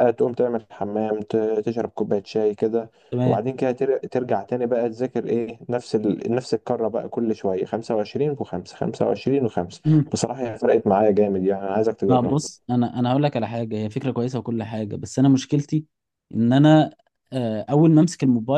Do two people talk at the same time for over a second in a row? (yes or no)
no